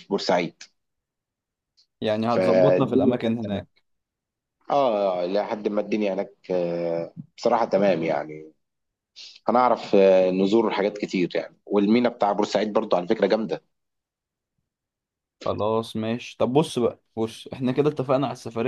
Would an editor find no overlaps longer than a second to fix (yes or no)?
no